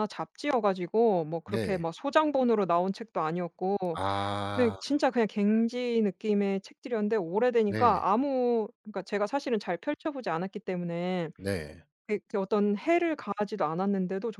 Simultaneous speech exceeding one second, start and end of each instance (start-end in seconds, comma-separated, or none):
none